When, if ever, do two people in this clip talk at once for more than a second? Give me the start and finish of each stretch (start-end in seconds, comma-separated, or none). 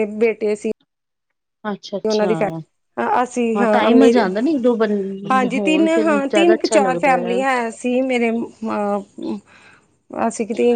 5.5-7.2